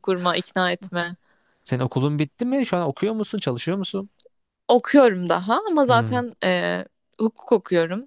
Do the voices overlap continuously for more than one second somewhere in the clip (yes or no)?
no